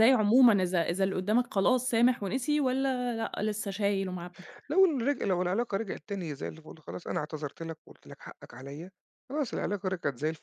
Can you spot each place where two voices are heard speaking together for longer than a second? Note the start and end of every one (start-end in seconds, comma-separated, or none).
none